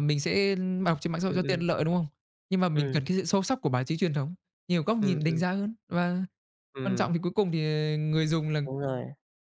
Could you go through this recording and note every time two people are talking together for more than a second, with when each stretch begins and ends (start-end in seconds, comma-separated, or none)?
none